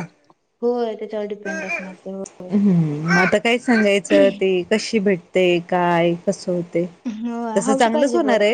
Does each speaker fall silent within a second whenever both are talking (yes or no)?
yes